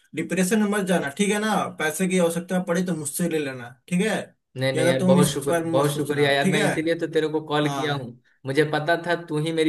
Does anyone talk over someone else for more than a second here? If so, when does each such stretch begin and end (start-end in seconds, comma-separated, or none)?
4.7-6.7